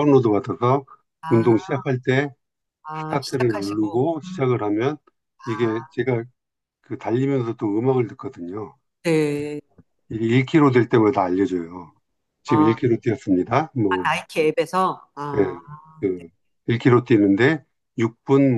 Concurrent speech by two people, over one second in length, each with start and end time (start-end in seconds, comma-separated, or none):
3.0-4.4